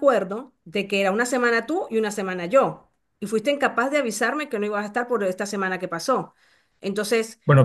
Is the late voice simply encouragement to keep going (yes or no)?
yes